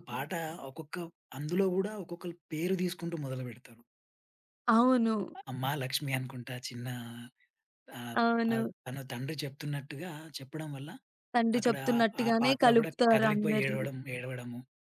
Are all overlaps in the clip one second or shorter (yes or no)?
no